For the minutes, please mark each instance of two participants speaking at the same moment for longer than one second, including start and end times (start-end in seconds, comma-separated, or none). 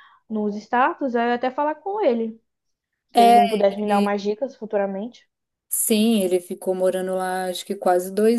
none